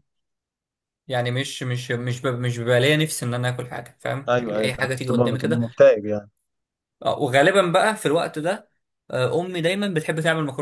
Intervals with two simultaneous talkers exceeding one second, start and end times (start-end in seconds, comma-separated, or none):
4.3-5.6